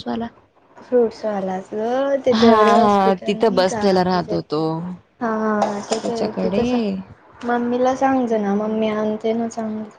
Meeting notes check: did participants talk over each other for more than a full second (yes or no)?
yes